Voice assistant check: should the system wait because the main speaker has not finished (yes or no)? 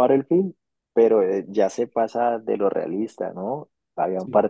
yes